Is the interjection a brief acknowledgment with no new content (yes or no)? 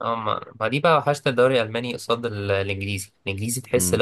yes